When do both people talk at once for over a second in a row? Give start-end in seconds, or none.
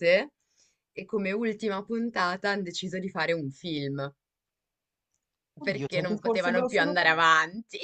5.6-7.3